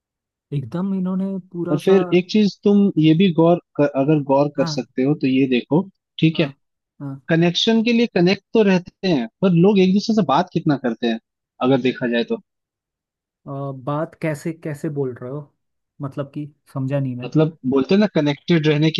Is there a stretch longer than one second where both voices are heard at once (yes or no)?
no